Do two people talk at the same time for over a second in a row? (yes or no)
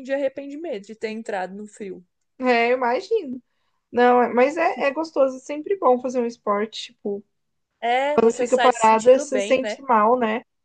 yes